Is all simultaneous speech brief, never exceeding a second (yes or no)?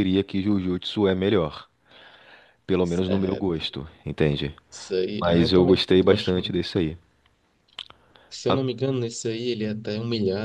no